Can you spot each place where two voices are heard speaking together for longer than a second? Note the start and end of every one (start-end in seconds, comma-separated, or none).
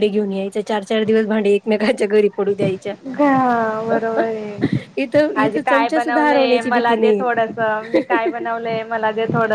5.4-7.2